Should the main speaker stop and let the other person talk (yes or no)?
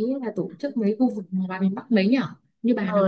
yes